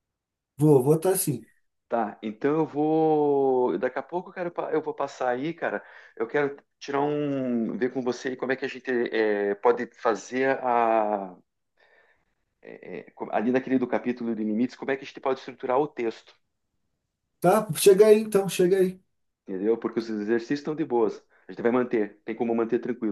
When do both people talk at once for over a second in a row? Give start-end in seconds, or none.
none